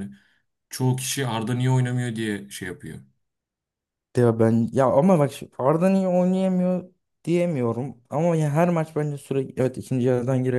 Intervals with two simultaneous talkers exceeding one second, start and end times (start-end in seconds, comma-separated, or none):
none